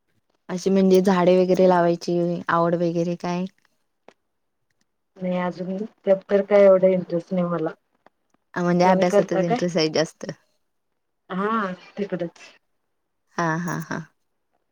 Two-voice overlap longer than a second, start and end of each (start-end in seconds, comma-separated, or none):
none